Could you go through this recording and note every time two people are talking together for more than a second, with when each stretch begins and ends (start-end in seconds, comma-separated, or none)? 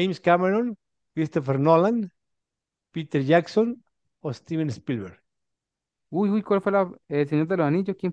none